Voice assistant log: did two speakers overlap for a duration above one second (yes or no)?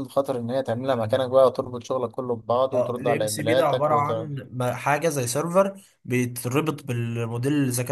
yes